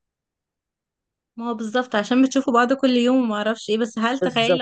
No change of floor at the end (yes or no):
yes